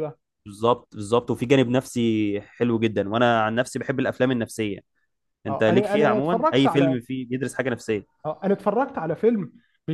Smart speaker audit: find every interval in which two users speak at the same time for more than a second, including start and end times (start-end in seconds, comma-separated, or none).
5.5-7.0